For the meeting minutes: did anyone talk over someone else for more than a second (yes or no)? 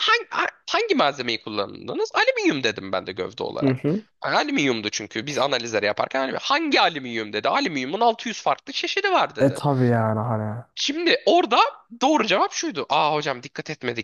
no